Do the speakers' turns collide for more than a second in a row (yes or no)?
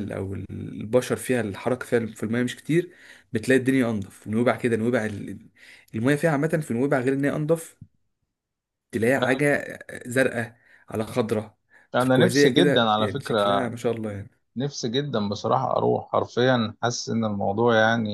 yes